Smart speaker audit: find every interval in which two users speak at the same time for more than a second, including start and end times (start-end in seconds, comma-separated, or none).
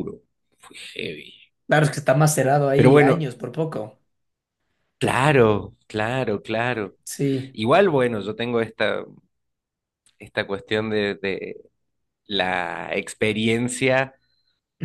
none